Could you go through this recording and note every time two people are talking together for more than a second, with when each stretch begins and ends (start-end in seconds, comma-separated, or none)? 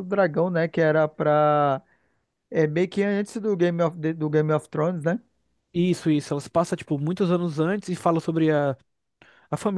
none